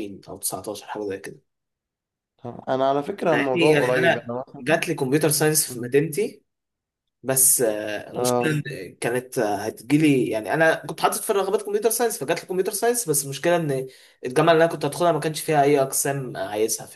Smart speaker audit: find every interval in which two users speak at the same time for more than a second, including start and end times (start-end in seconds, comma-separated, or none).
3.3-4.8